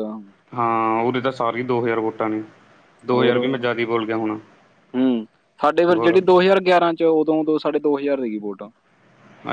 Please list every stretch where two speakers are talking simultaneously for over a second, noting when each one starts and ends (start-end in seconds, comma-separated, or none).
none